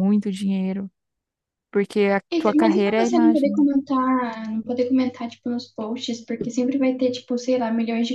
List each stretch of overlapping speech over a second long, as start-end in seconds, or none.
2.3-3.7